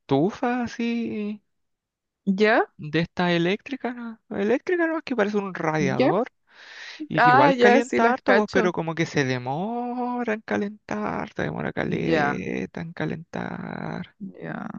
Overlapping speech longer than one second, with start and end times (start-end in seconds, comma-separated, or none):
7.2-8.7